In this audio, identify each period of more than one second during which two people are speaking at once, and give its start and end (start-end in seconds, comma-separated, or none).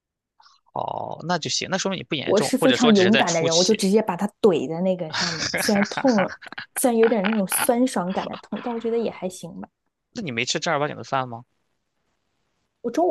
2.2-3.8